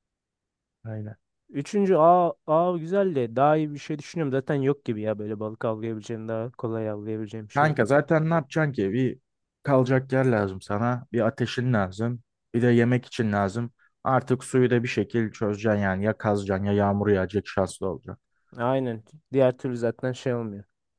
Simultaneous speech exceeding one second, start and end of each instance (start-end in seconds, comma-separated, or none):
none